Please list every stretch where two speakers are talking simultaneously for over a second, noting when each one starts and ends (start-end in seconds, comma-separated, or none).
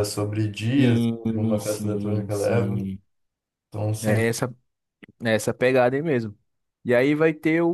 0.8-2.8